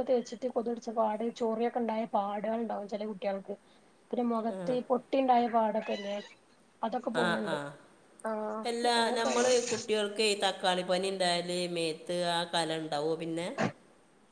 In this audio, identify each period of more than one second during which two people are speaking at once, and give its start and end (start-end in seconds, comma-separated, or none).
none